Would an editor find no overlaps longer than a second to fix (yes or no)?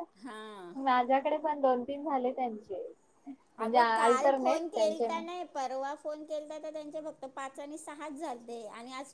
no